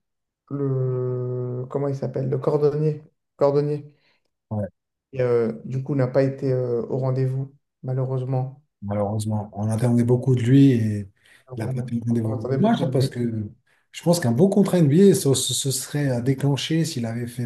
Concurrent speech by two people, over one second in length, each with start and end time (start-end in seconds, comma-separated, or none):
11.6-13.2